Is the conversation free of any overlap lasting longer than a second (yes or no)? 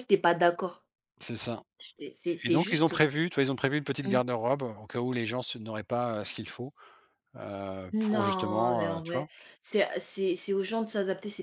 no